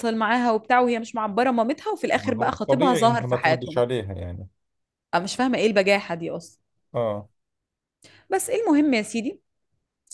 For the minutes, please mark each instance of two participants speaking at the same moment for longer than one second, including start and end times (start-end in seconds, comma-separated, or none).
2.1-3.8